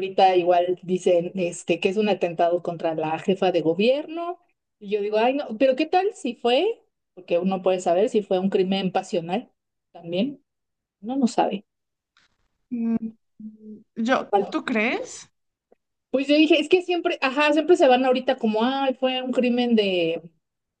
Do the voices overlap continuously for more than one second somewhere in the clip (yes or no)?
no